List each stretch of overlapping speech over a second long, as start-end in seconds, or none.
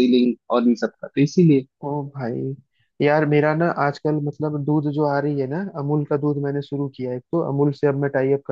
none